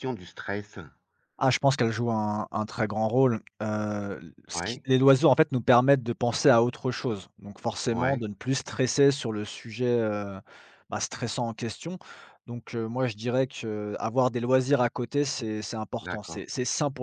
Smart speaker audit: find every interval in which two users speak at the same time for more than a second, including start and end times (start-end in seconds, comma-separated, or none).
none